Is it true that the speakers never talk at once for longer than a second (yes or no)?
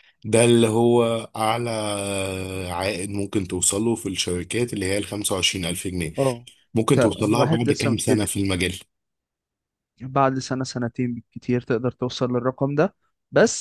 no